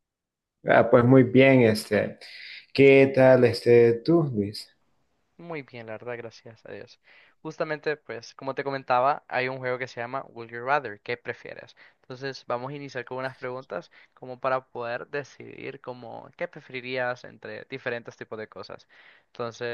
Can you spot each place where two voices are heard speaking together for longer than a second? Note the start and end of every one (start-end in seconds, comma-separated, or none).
none